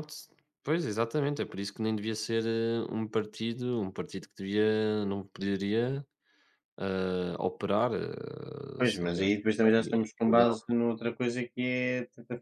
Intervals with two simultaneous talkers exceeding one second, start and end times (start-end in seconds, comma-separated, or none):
8.8-10.6